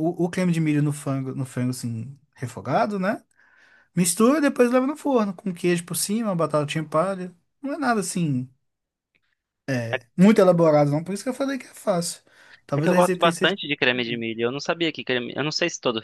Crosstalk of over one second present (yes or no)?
yes